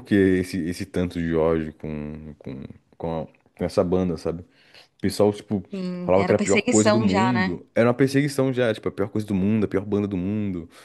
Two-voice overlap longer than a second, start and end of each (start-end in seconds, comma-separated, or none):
6.0-7.6